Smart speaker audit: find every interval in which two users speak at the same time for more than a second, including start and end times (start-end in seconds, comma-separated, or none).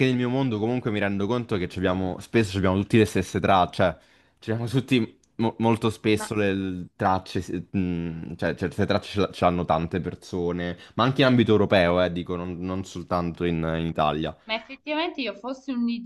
none